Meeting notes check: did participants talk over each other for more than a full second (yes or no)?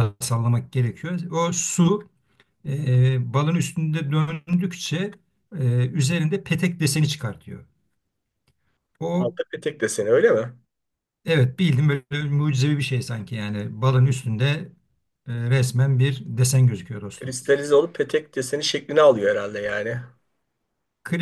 no